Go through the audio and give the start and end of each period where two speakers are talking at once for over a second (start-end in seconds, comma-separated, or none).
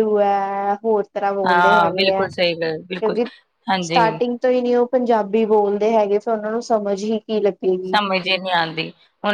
1.5-3.2